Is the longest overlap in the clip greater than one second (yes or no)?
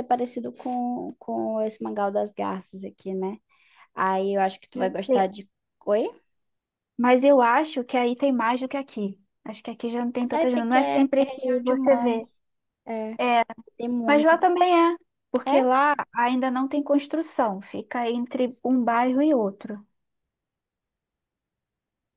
yes